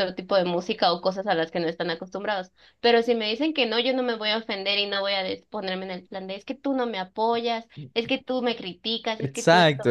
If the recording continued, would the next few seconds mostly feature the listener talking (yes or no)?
yes